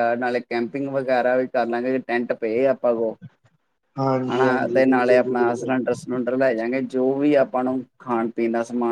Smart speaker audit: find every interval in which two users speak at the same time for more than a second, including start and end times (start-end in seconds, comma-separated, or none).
4.4-5.7